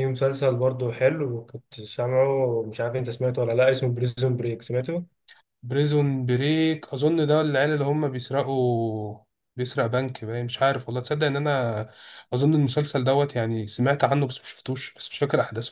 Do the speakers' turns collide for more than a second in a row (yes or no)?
no